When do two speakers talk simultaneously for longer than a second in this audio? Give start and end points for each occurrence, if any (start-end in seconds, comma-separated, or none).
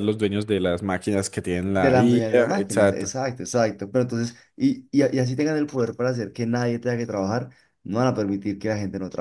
1.7-3.1